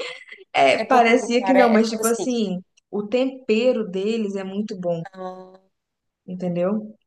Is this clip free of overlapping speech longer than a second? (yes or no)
no